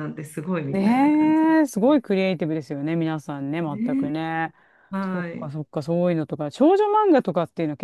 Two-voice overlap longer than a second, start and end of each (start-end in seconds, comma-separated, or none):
0.7-2.0